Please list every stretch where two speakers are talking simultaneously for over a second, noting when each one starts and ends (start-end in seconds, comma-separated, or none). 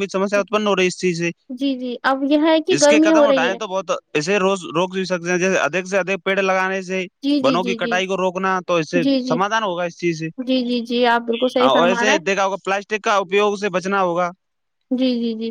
10.5-12.3